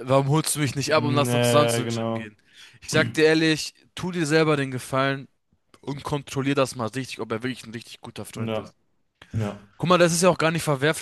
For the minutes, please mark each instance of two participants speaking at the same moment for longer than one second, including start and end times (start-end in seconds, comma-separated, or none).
0.9-2.3